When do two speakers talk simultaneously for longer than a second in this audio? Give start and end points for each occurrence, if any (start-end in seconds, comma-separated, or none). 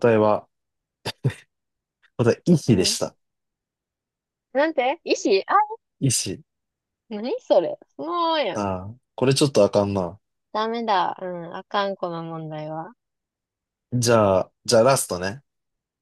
none